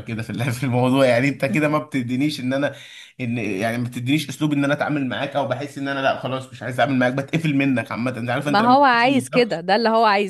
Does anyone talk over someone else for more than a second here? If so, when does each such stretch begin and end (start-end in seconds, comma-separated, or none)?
8.4-9.7